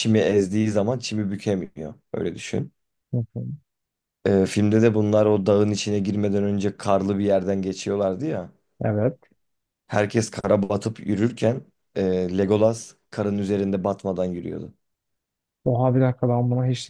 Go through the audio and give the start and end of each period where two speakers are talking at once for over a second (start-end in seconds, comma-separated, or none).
none